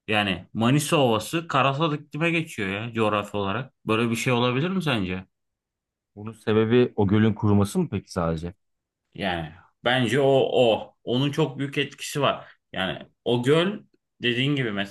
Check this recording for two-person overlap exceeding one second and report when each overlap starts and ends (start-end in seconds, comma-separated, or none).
none